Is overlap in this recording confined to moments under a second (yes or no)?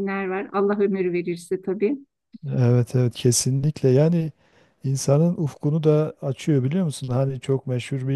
yes